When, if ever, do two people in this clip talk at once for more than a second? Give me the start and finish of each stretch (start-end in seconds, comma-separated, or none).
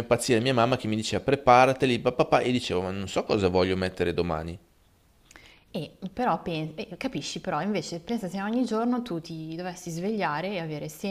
none